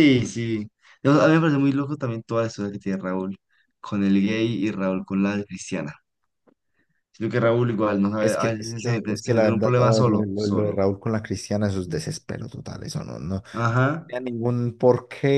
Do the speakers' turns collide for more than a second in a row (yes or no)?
yes